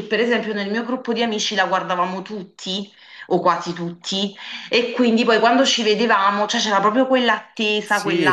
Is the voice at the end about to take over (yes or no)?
yes